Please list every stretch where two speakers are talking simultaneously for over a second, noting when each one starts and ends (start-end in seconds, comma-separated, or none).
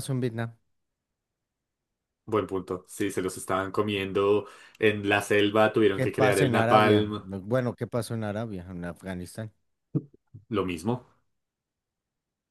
5.9-7.2